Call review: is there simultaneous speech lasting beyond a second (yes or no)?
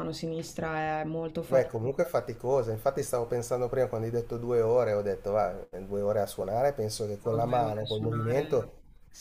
yes